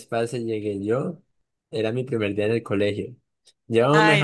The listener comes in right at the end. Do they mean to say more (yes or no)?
no